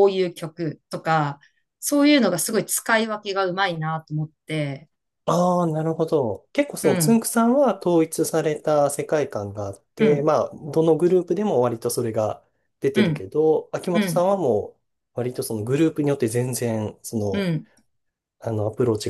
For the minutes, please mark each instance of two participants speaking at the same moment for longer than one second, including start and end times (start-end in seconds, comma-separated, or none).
none